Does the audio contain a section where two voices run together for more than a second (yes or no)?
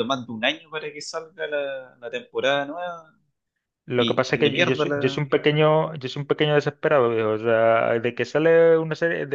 yes